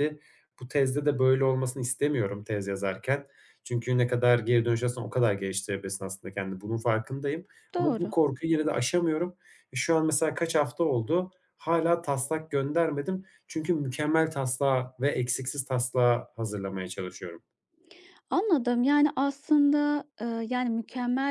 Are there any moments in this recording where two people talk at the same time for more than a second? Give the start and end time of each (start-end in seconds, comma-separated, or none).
none